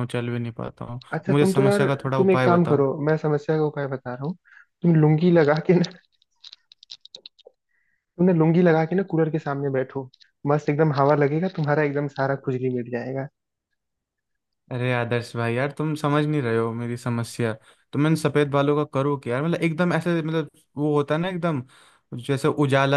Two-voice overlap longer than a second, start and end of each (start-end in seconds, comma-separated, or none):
1.1-2.8